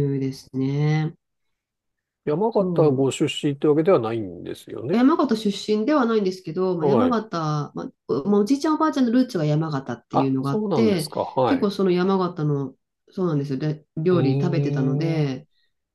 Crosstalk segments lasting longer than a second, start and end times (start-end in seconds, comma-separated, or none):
10.1-11.7, 14.1-15.3